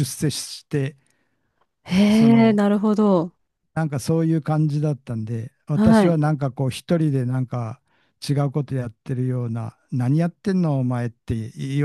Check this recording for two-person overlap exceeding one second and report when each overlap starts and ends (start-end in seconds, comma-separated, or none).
none